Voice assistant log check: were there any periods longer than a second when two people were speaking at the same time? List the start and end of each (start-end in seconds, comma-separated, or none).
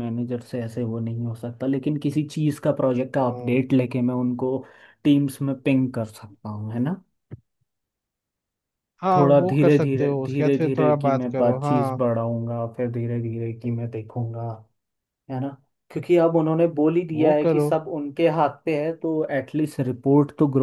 9.2-12.0